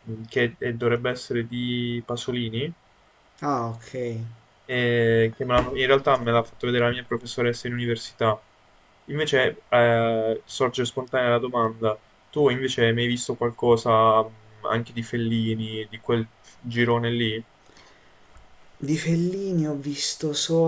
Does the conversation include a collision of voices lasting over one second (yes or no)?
no